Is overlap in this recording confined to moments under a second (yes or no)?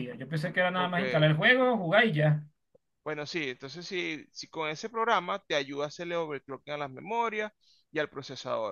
yes